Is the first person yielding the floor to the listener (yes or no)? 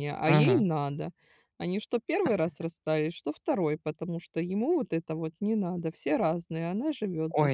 yes